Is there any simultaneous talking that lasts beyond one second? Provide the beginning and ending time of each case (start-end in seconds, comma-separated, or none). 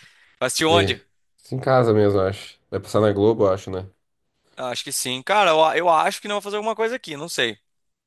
none